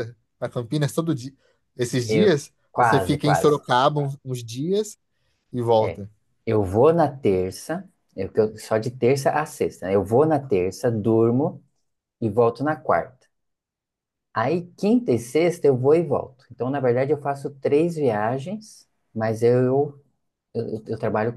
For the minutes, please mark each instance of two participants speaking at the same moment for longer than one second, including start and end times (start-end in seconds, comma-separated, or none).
2.0-3.6